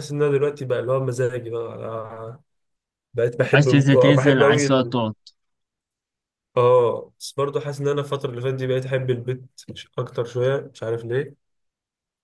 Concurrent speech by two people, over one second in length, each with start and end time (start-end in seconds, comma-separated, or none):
3.5-4.9